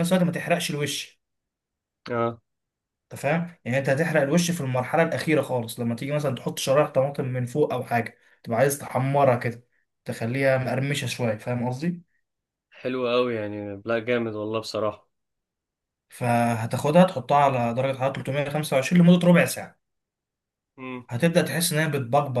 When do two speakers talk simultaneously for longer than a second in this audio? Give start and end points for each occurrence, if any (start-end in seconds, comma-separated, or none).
none